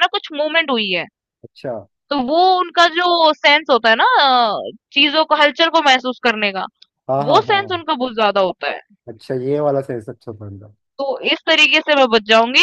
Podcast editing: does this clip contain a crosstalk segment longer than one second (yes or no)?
no